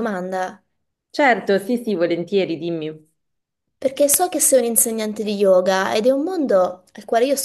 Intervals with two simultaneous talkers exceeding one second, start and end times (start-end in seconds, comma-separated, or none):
none